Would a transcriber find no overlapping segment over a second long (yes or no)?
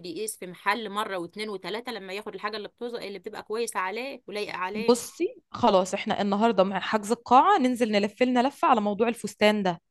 yes